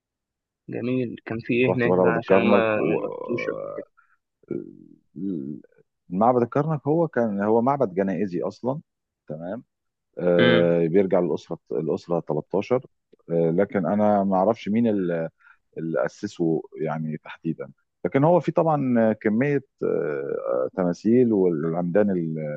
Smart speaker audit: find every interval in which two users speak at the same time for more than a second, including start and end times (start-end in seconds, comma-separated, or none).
1.7-3.0